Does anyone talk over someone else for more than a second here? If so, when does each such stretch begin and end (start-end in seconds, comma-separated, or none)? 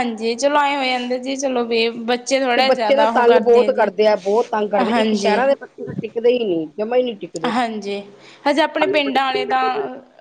none